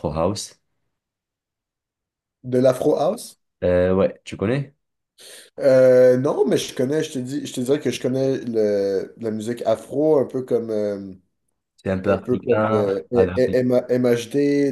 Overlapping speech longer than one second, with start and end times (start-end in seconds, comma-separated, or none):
12.0-13.6